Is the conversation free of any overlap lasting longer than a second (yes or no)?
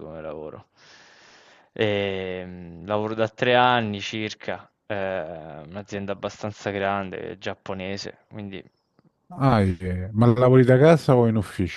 yes